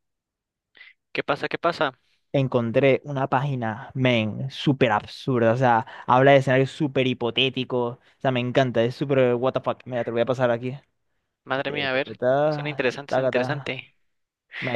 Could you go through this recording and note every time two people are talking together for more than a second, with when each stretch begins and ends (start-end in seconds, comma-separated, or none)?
11.6-13.8